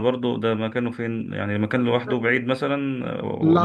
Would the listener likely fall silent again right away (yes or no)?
no